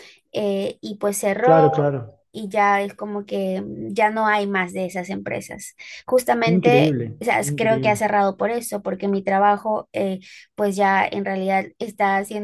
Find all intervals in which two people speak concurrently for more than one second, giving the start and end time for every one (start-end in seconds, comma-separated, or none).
6.5-8.1